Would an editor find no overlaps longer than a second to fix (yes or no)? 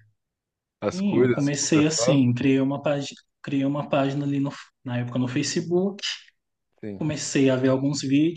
no